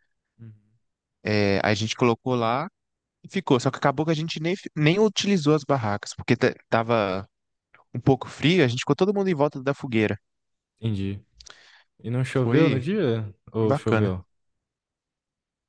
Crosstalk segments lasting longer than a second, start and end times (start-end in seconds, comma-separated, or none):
none